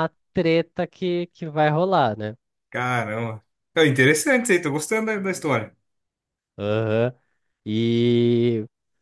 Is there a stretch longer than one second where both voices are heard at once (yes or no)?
no